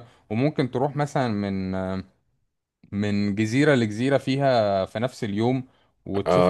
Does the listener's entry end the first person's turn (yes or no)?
yes